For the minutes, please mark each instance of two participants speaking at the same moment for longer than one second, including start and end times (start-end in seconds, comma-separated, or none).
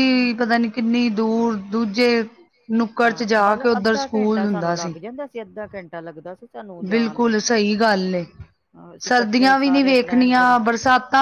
3.0-4.8, 9.1-10.6